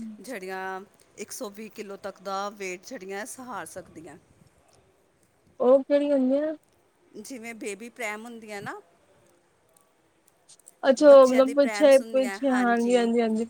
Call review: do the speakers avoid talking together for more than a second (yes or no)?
no